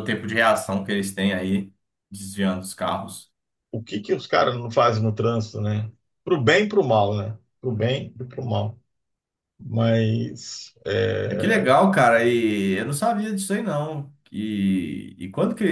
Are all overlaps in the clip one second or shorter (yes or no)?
yes